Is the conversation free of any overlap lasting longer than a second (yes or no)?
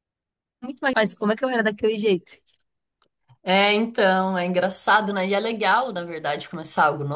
yes